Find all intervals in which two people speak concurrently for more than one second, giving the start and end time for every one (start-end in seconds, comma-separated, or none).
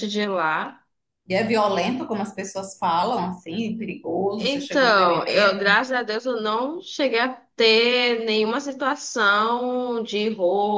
4.4-5.8